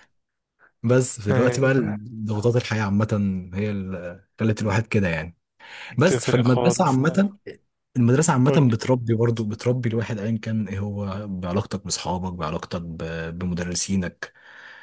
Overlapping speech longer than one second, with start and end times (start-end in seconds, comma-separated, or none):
6.0-7.3